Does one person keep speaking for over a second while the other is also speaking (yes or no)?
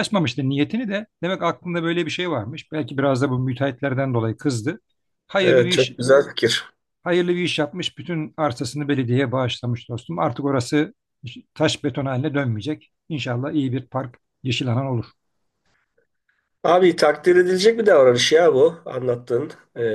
no